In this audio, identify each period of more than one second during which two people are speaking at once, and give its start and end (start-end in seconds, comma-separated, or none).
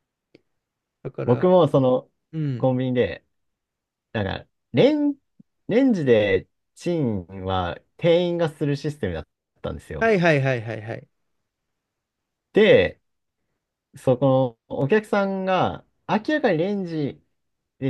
none